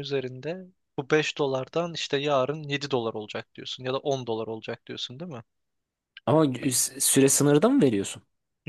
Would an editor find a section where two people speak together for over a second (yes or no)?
no